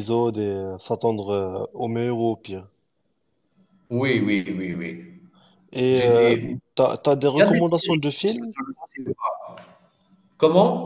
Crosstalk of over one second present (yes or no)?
yes